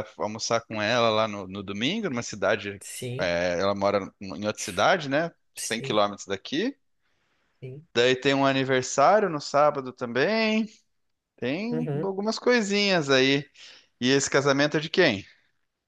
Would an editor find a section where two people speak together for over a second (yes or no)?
no